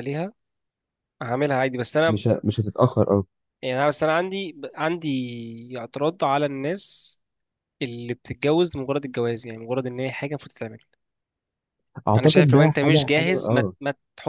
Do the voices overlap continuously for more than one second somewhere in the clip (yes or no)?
yes